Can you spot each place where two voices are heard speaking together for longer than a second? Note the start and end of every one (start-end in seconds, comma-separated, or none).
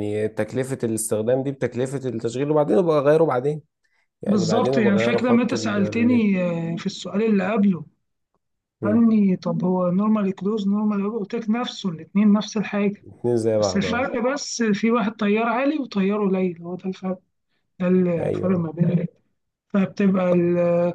4.3-6.3